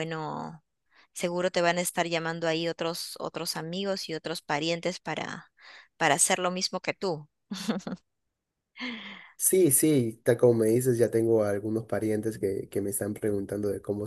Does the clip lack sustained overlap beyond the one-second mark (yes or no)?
yes